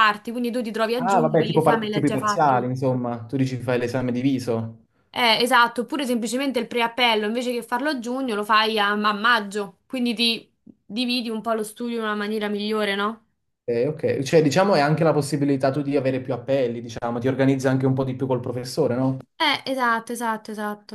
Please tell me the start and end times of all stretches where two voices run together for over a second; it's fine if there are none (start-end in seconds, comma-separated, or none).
0.9-2.7